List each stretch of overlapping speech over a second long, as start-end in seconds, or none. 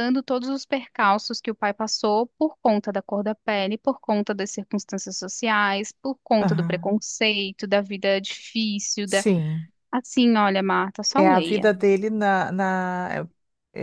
none